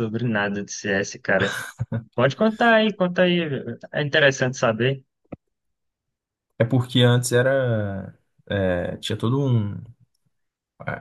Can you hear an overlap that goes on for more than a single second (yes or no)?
no